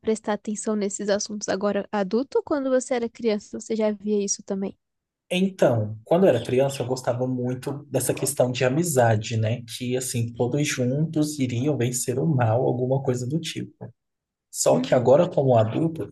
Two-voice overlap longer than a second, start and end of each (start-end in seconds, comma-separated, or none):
none